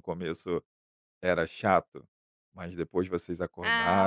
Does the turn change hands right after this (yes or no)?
yes